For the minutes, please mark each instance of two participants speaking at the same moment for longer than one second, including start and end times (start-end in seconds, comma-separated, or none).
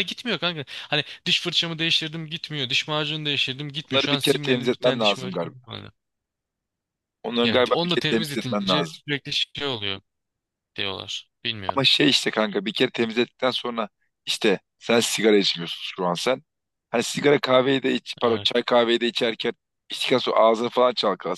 3.9-5.5, 7.4-9.0